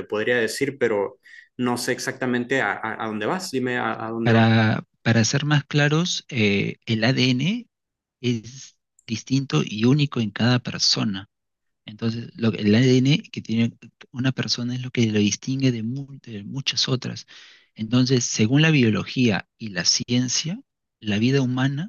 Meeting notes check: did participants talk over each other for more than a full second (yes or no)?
no